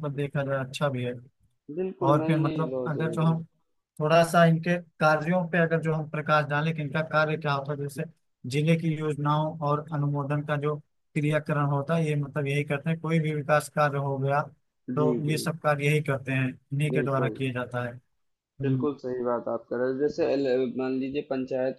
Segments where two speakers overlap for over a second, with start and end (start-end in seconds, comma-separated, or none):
2.0-3.3